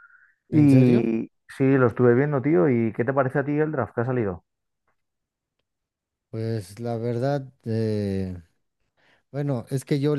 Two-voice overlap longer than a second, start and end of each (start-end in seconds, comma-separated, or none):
none